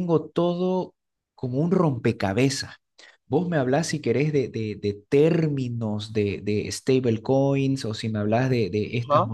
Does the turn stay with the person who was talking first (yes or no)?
yes